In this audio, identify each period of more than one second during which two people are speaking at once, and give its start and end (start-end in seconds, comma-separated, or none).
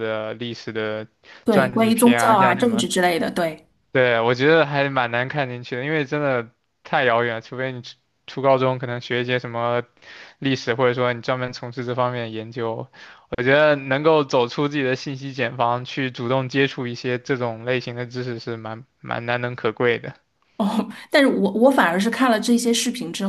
1.5-2.9